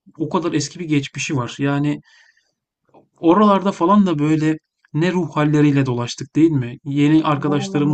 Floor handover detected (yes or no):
no